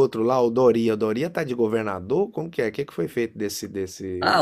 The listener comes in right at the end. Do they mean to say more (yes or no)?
yes